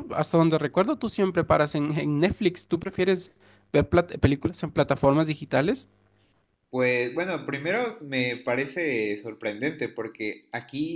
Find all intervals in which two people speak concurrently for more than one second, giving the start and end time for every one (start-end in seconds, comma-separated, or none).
none